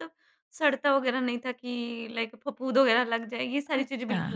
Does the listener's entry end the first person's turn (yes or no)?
yes